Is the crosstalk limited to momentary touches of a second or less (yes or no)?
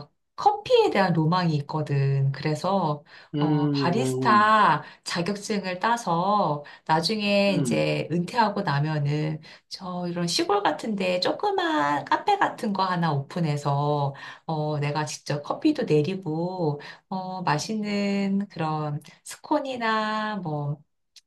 no